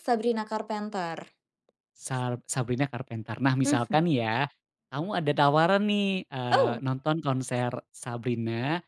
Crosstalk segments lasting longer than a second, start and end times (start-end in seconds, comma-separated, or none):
none